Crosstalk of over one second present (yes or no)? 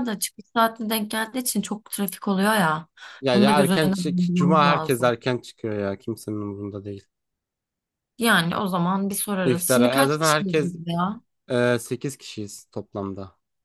yes